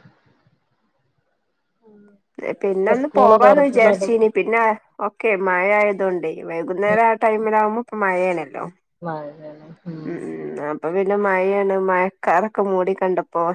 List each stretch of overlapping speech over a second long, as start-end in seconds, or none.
2.7-4.1